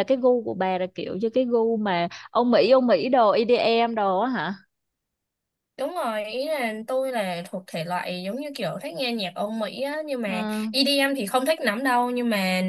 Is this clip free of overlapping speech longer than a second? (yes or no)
yes